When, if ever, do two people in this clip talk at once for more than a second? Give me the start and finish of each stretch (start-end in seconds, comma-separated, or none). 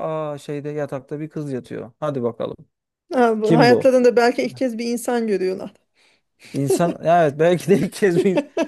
none